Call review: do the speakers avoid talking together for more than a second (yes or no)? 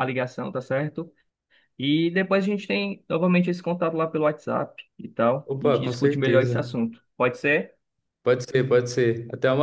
no